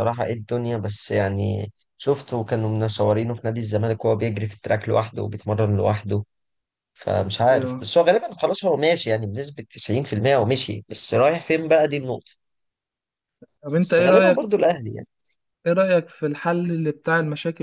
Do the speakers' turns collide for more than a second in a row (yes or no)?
no